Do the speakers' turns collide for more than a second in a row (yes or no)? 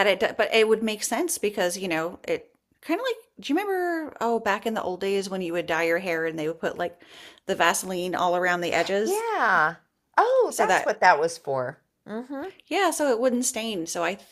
no